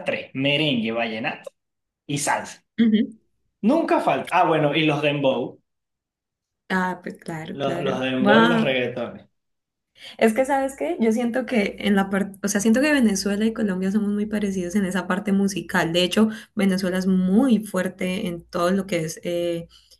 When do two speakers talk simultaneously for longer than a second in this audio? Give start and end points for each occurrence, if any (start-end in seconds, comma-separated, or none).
7.5-8.7